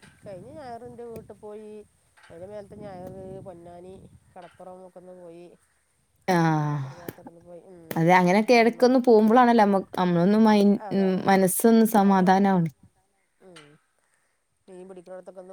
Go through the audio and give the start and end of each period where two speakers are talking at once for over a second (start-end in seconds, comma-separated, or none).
none